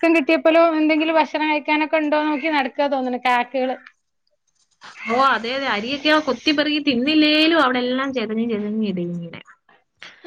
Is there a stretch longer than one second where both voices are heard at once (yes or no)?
no